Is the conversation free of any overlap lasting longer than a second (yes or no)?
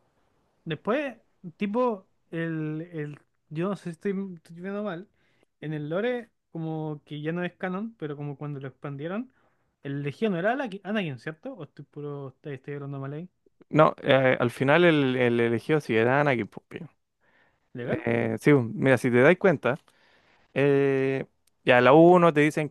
yes